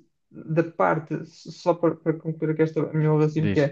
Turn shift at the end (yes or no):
no